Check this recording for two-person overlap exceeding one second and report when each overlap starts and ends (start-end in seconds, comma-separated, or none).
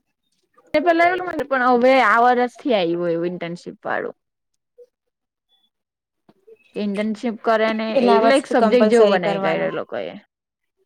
8.0-9.7